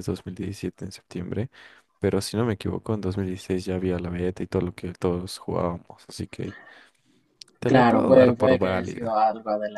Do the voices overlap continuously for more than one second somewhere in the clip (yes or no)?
yes